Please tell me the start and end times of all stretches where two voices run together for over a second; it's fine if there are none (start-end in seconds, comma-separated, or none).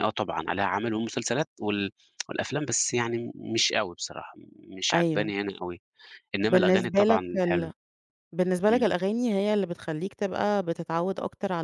6.5-7.7